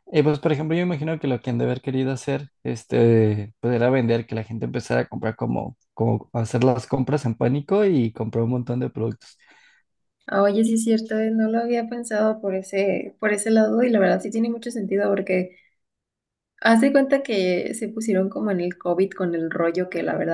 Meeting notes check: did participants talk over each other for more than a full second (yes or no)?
no